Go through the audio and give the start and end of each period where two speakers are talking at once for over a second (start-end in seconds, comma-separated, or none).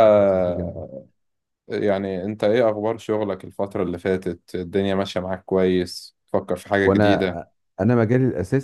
none